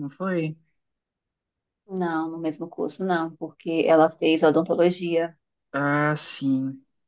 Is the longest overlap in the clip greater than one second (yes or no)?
no